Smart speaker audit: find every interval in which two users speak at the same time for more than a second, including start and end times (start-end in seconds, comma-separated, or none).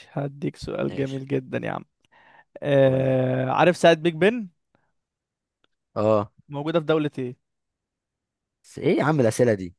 none